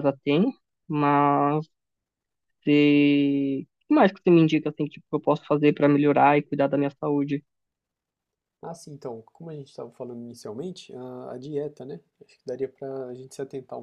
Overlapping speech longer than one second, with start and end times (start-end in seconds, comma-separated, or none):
none